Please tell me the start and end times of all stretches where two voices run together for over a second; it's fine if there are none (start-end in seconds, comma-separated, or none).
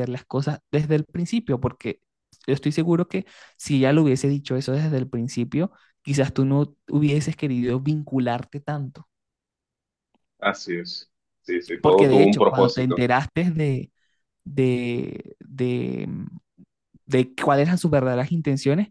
11.8-13.0